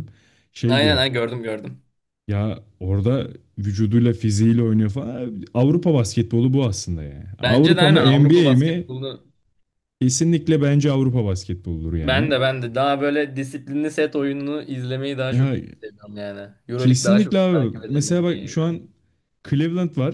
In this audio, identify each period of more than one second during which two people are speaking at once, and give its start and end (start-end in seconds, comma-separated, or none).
7.4-8.9, 16.8-18.8